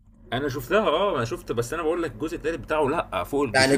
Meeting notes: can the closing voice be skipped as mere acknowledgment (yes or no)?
no